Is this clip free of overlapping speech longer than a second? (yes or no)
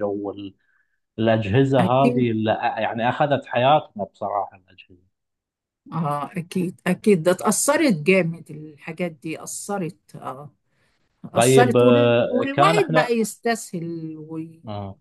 no